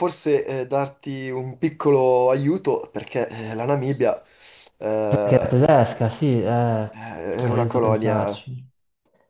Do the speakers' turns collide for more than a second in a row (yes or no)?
yes